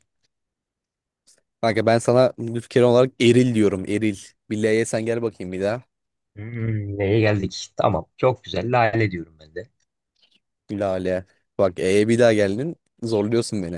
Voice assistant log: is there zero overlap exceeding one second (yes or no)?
yes